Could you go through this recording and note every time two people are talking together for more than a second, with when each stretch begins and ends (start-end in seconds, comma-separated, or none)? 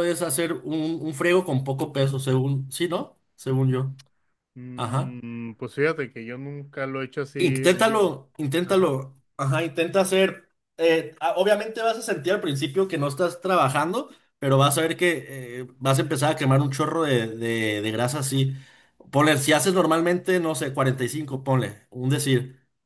none